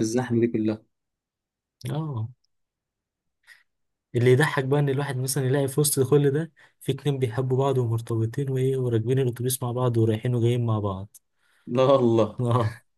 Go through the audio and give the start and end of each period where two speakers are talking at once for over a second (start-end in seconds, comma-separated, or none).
none